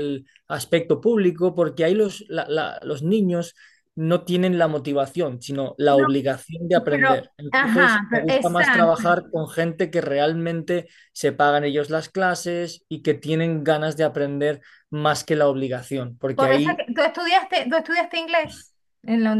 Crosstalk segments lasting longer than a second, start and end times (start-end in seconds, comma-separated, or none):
6.9-8.9